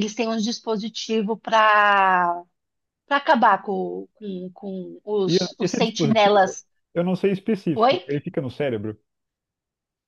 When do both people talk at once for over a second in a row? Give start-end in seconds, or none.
5.3-6.6